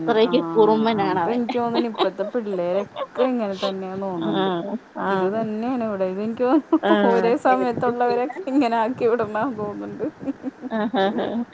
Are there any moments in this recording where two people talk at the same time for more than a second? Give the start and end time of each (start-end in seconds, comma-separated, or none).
6.9-8.4